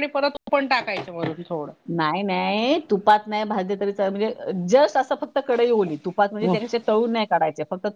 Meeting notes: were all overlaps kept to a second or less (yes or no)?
yes